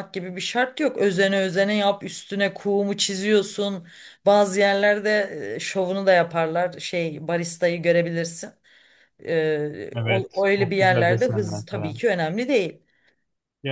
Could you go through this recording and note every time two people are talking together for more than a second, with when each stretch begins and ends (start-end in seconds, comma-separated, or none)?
9.9-12.0